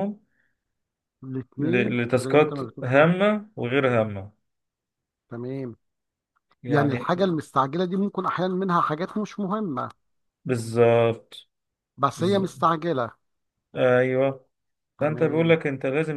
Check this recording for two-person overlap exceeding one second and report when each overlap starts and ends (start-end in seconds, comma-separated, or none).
1.6-3.1